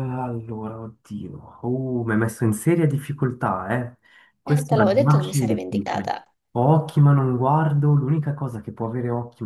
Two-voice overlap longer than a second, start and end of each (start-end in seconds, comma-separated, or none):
4.4-6.1